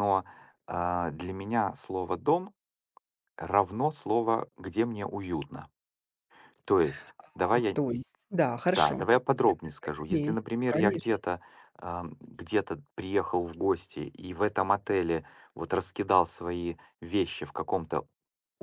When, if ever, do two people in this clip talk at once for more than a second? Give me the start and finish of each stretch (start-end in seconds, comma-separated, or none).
8.7-11.1